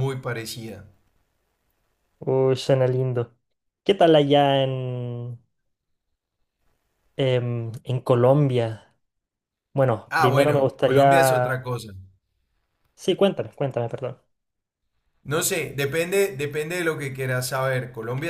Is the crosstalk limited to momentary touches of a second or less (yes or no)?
no